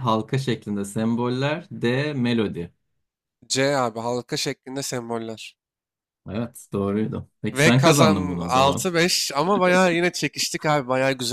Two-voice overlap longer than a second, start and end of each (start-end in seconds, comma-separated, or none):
7.5-8.9